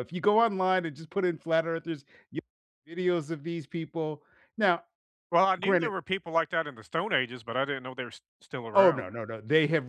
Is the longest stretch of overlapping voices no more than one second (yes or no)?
yes